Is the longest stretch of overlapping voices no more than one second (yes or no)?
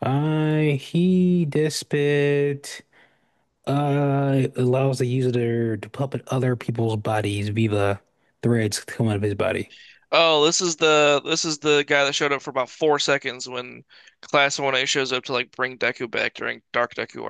yes